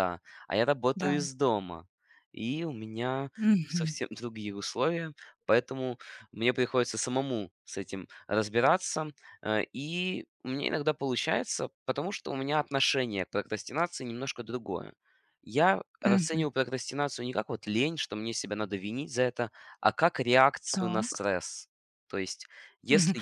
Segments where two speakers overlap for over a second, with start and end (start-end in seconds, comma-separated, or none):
none